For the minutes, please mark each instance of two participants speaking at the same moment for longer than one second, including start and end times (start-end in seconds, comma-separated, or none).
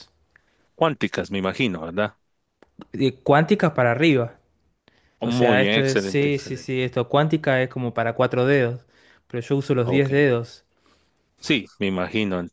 5.2-6.7